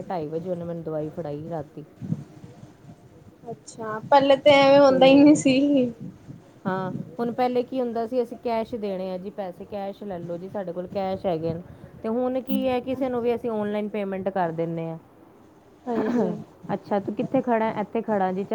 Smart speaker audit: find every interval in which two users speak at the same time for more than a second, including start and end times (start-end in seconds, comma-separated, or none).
none